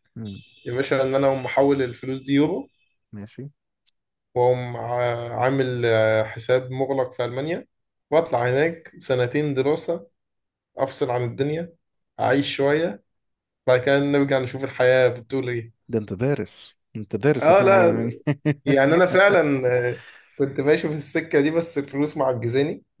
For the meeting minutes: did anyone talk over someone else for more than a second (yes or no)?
no